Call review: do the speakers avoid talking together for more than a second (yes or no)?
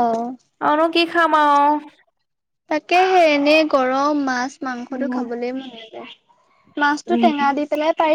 yes